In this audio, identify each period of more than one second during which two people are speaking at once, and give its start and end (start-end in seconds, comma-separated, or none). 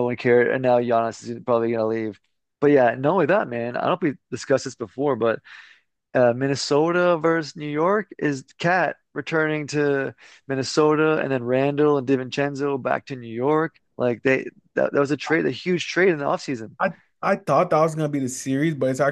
none